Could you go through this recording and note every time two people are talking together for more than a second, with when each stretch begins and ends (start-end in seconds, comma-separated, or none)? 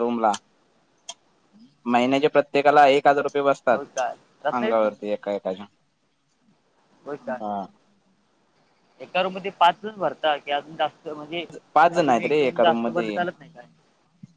11.7-13.2